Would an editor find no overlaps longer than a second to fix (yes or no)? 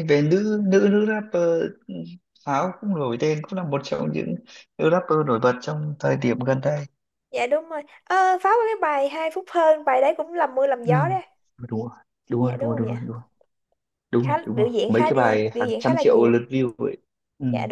no